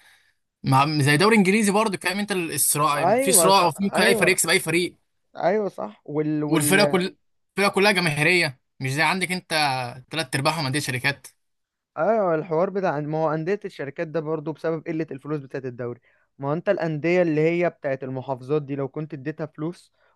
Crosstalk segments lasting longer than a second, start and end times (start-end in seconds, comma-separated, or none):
2.9-4.4